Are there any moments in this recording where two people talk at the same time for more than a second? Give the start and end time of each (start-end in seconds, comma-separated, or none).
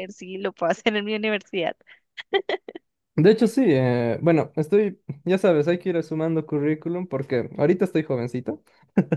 none